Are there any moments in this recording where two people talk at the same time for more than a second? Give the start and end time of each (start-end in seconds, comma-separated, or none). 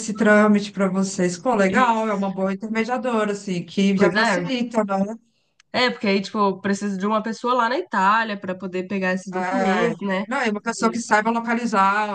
none